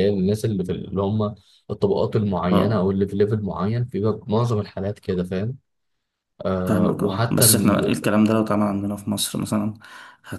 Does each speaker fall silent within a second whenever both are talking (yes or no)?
no